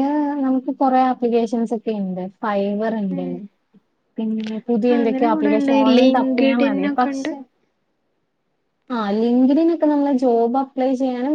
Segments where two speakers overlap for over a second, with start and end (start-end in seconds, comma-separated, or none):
5.0-7.3